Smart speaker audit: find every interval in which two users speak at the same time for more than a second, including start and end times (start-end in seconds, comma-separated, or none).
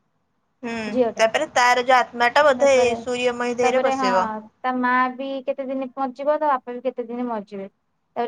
none